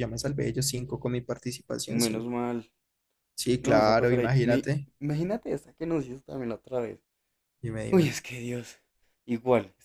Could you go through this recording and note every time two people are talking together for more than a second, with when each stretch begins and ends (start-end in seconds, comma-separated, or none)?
3.6-4.9